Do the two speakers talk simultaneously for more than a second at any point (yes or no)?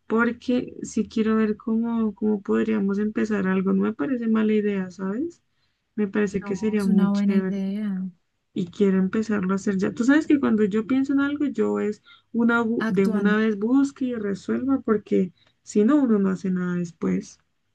yes